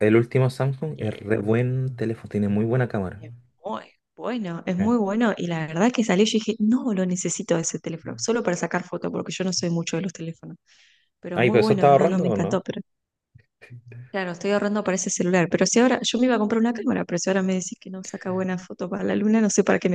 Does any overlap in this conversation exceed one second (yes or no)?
yes